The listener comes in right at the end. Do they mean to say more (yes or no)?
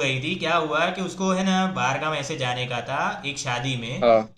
no